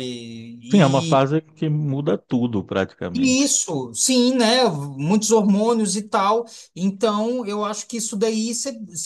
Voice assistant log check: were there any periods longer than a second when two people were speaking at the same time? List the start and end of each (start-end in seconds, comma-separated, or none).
none